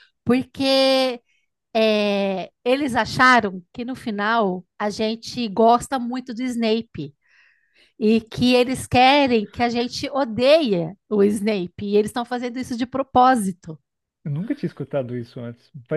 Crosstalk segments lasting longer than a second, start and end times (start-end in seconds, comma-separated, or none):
none